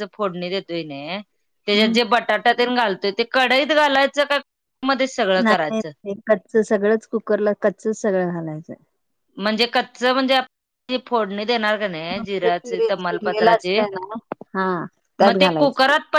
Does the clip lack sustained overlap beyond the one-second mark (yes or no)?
no